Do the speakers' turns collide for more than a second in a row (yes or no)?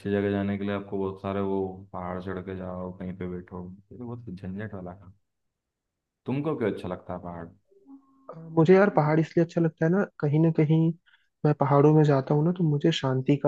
no